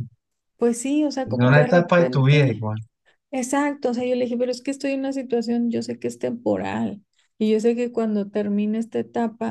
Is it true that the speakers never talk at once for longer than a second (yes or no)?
no